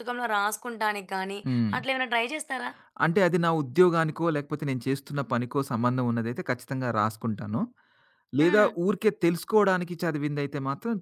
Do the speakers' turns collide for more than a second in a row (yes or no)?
no